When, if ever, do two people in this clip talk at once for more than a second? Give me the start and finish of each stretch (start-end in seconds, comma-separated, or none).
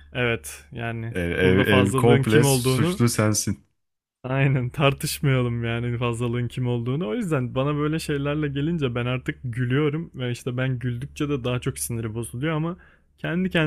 1.1-3.0